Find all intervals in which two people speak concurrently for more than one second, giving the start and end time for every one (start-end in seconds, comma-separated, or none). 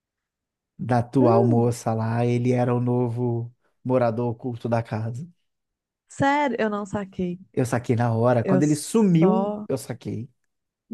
8.4-9.7